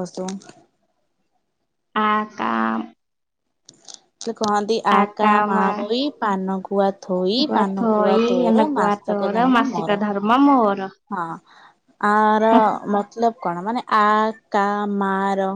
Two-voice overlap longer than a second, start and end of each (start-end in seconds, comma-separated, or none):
7.8-10.0